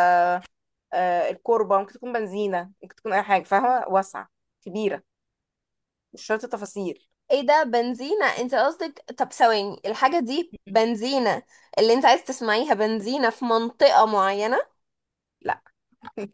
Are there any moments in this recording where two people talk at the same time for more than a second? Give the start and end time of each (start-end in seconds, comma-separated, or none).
none